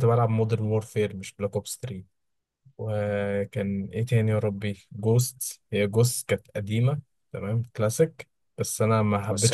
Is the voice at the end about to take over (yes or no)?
no